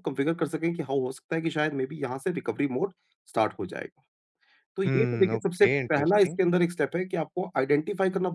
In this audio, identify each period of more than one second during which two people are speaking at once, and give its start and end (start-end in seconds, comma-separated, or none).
4.8-6.4